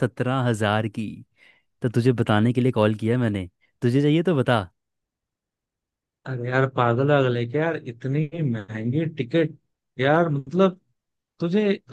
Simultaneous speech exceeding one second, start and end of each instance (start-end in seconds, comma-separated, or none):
none